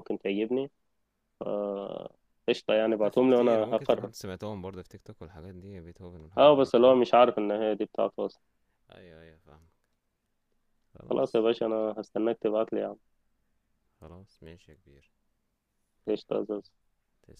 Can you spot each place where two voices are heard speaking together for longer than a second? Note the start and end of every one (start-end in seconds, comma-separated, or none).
2.9-4.1